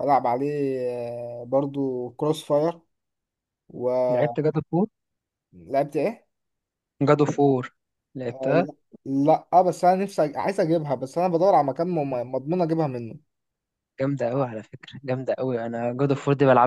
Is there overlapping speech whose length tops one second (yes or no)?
no